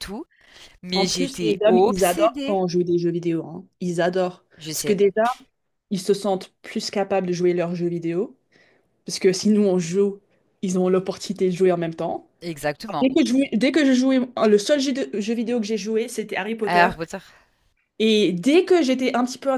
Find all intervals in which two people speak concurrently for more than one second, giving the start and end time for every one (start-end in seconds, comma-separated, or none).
0.9-2.6